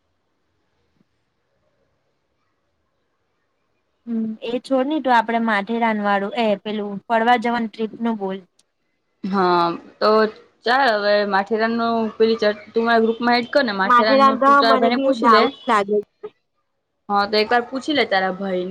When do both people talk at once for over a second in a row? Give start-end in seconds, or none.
13.9-15.4